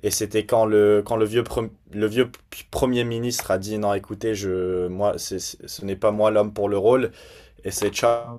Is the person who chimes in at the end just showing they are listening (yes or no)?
yes